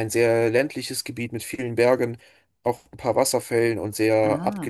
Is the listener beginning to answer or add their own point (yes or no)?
yes